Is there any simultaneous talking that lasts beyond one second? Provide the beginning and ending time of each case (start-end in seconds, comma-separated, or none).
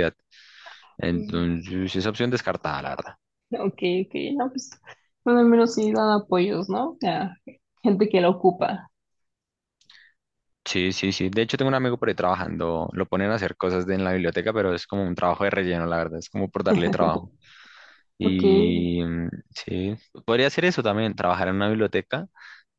none